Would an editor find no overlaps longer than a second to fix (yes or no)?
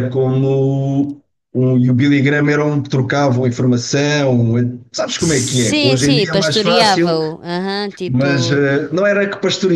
no